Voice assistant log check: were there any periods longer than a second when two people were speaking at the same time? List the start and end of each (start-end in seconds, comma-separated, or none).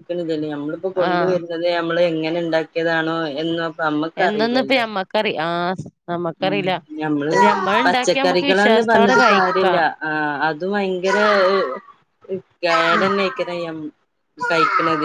8.2-9.8